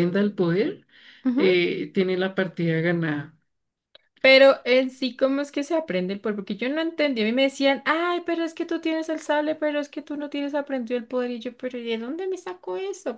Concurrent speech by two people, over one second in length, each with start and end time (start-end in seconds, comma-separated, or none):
none